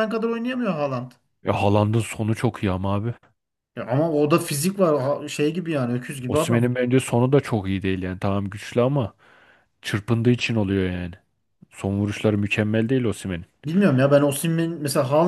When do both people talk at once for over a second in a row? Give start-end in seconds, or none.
none